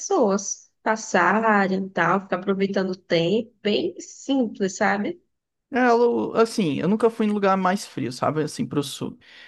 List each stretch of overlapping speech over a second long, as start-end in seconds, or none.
none